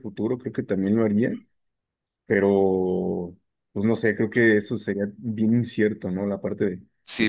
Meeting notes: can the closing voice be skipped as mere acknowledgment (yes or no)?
no